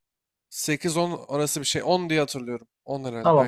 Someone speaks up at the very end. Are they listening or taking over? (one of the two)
taking over